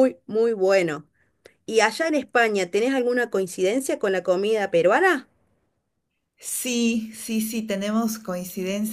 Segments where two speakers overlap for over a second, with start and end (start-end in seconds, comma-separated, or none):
none